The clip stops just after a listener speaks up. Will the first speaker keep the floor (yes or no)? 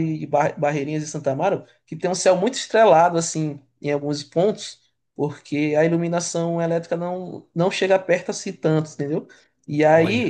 yes